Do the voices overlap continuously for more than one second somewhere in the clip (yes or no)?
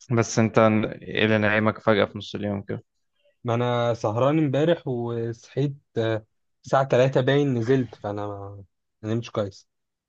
no